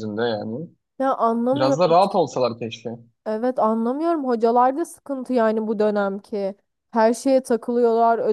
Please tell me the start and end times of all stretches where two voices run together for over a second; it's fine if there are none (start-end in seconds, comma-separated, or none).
none